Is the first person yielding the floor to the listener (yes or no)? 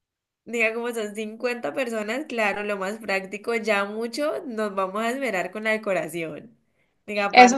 yes